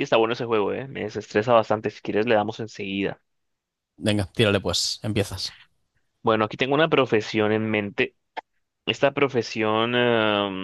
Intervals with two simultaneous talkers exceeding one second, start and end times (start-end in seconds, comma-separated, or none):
none